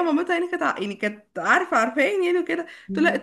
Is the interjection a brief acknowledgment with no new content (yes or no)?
yes